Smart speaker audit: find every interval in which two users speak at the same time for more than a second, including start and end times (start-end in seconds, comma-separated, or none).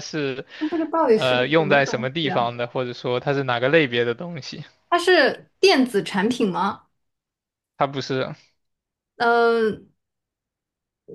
1.1-2.5